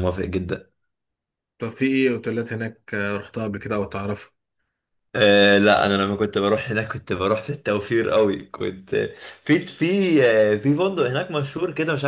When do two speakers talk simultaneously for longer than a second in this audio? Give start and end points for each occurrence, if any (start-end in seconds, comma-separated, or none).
none